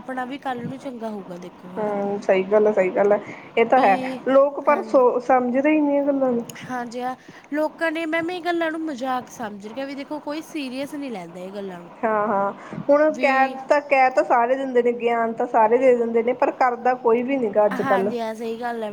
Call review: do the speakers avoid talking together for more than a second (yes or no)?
yes